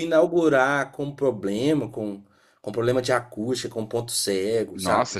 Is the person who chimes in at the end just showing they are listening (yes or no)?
no